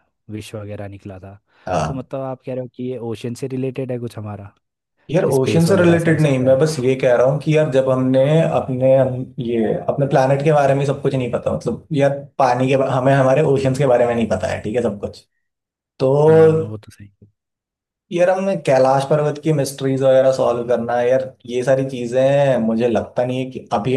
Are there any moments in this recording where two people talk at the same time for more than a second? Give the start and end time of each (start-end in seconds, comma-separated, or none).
5.3-6.6